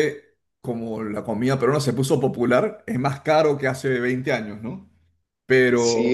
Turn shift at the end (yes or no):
yes